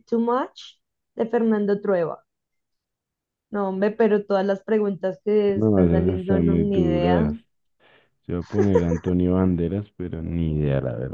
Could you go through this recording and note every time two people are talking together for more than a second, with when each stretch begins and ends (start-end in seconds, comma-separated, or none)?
5.5-7.2